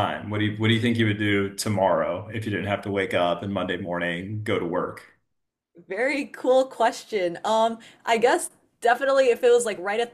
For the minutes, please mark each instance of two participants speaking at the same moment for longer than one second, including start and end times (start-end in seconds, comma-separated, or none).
none